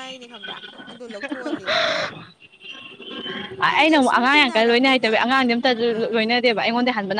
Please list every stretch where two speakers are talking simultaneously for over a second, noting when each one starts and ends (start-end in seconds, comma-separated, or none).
3.7-5.1